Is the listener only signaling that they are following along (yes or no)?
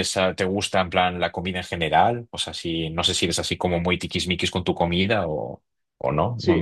no